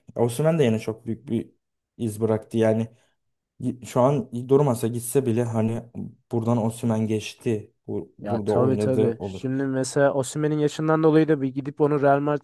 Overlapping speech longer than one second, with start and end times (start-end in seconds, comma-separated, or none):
8.2-9.4